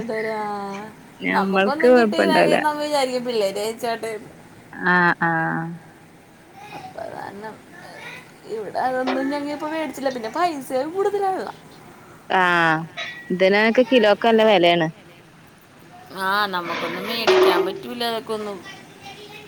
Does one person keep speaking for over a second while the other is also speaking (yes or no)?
yes